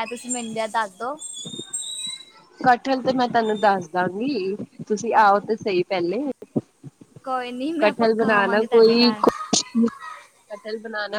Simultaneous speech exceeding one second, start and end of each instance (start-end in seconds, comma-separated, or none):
7.8-9.2